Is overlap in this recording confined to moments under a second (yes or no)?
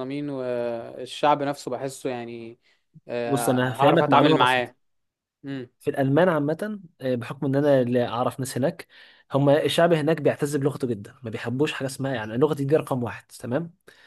no